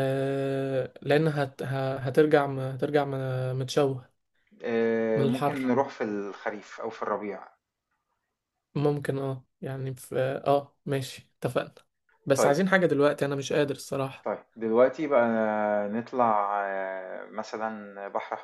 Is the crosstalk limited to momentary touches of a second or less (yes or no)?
yes